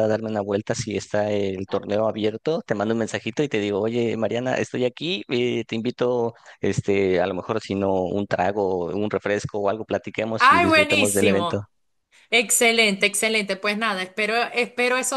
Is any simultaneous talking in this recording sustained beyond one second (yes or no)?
yes